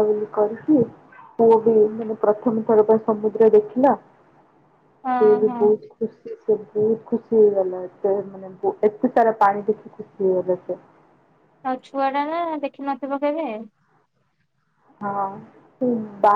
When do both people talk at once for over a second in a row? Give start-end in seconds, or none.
none